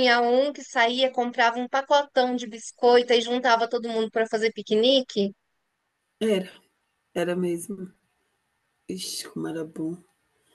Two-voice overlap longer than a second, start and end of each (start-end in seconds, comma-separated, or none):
none